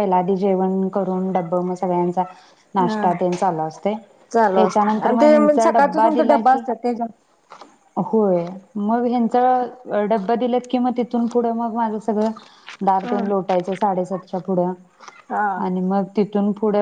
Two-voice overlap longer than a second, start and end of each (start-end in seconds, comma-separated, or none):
4.5-6.6